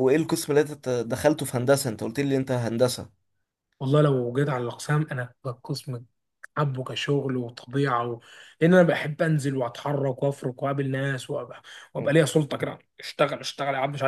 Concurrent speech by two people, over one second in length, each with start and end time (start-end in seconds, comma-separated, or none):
none